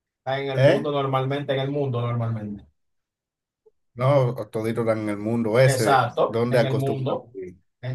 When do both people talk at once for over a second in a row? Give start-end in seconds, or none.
5.6-7.3